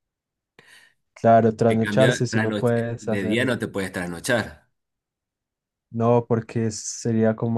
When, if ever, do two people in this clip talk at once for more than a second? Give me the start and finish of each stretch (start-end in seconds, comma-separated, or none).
1.7-3.5